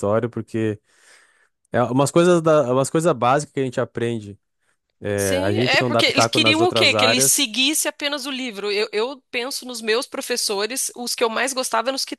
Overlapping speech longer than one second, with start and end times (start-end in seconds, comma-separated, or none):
5.2-7.5